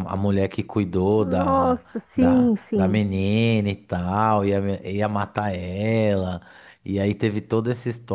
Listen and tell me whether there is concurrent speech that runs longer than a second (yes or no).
yes